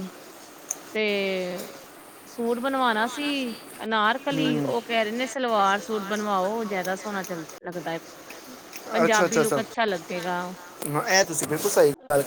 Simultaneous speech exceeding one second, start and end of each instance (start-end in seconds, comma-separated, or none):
none